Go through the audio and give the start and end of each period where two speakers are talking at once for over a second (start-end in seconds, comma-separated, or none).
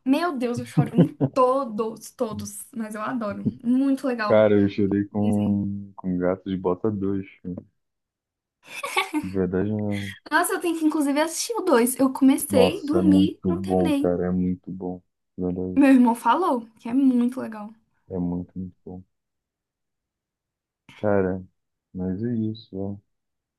12.5-14.2